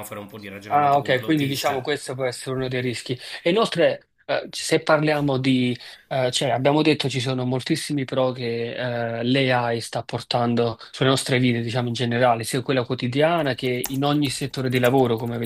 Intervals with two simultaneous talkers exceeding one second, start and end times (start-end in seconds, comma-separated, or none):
0.7-1.9